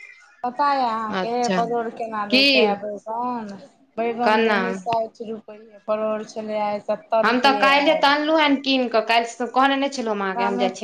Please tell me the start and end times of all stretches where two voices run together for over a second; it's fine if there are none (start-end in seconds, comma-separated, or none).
none